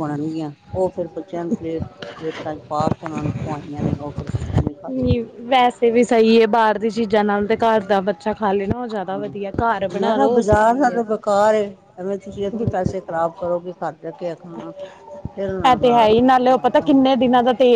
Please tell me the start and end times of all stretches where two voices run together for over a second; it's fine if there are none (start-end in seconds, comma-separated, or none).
15.7-17.0